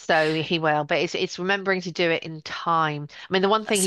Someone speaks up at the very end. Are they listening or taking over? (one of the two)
listening